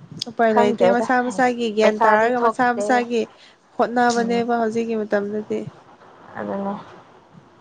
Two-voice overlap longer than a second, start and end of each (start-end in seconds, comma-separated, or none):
0.5-2.9